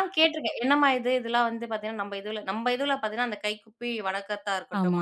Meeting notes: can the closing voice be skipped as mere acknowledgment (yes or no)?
yes